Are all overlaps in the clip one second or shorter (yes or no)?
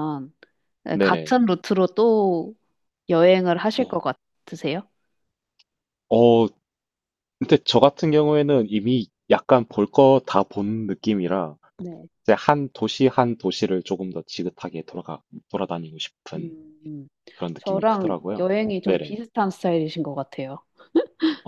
no